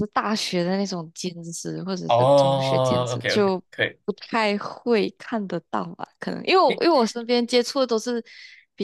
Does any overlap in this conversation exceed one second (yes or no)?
yes